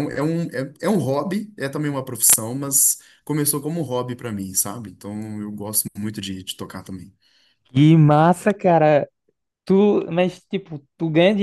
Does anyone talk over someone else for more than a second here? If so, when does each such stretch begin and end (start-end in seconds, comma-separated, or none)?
none